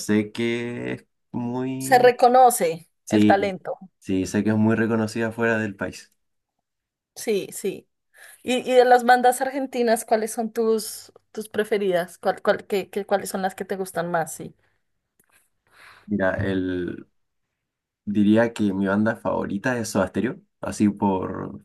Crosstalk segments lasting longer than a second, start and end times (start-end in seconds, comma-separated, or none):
none